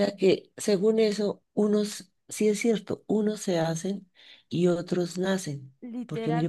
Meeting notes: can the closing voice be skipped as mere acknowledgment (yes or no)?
no